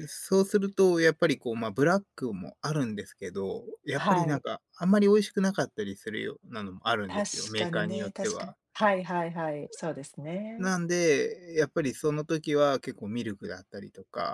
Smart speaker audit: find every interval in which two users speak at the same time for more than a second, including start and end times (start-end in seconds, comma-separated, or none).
7.1-8.6